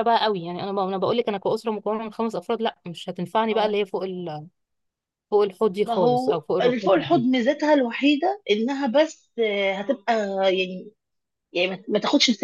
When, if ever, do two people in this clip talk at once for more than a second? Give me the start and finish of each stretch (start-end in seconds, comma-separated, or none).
5.8-7.3